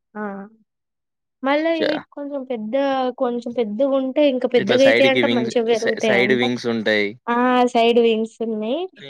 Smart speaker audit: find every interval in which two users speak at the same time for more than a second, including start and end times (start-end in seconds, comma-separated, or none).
4.6-6.4